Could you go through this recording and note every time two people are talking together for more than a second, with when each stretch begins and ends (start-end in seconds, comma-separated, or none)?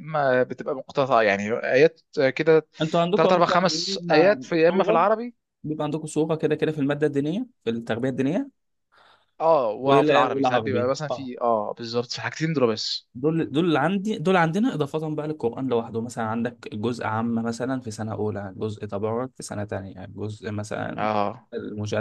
3.1-5.0, 9.8-11.3